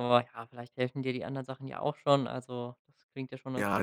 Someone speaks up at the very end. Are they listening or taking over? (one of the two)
taking over